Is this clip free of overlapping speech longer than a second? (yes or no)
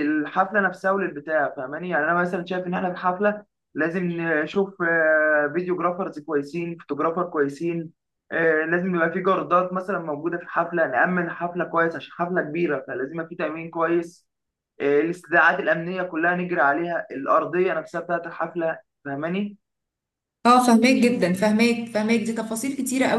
yes